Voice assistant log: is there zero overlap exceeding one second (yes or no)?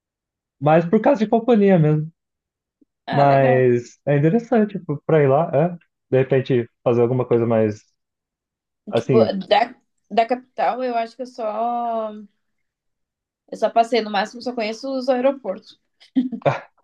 yes